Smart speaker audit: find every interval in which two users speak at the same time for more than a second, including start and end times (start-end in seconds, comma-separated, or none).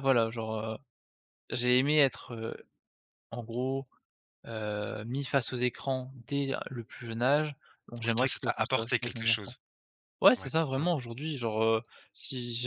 8.0-9.6